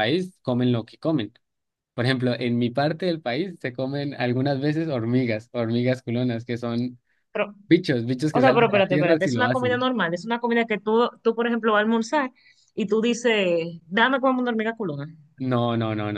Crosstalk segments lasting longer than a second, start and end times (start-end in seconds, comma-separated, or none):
8.4-9.9